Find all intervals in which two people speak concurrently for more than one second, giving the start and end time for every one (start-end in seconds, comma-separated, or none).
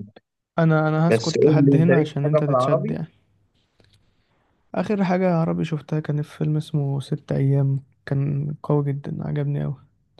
1.1-3.0